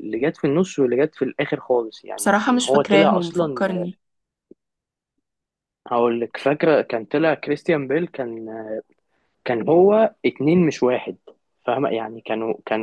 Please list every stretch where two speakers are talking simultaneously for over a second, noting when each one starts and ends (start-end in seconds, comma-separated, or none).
2.2-3.6